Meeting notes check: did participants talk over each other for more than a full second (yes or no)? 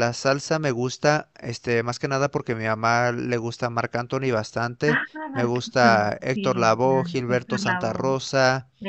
yes